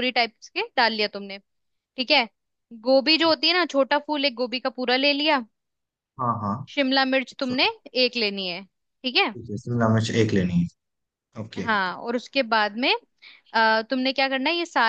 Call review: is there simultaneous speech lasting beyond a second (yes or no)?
no